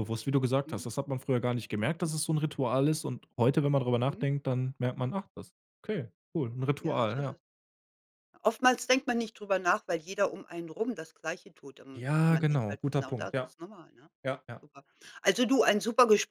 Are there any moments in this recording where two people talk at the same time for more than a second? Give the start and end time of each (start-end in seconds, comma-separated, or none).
11.9-13.5